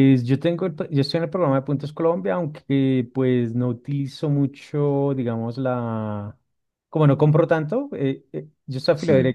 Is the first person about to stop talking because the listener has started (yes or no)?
no